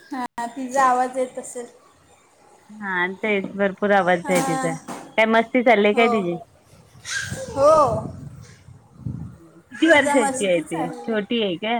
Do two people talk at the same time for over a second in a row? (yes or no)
yes